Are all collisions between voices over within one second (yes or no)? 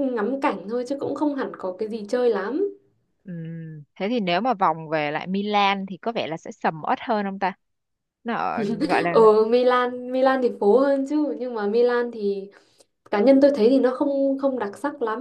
yes